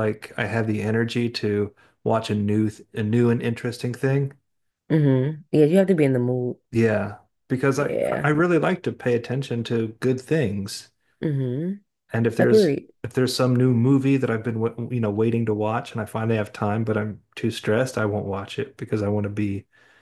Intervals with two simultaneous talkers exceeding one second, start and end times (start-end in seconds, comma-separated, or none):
none